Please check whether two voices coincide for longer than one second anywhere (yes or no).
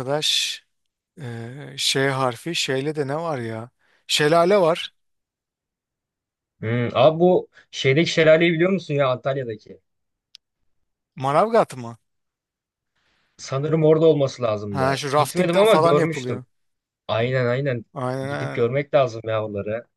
yes